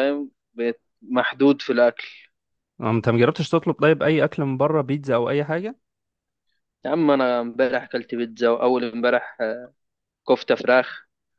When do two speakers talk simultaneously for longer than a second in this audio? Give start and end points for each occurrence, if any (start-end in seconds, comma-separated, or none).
none